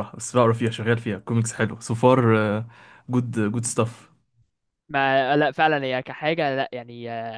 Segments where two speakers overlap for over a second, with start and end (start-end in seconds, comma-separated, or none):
none